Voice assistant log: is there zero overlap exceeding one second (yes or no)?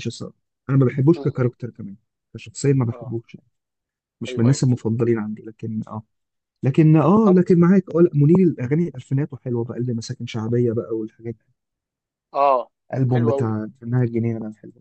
yes